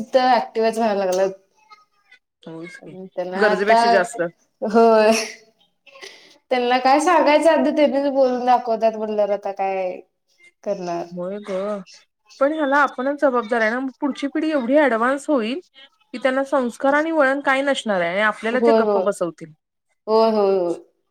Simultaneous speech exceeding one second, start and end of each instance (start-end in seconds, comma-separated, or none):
none